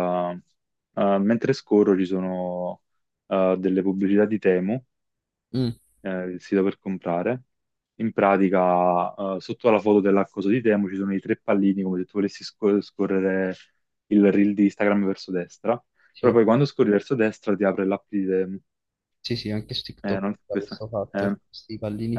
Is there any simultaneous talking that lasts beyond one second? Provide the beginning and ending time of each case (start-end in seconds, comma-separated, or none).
20.0-21.6